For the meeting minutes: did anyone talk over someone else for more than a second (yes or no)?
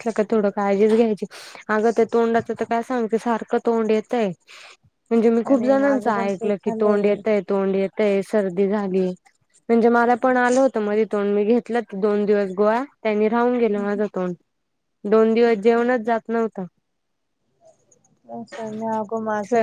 yes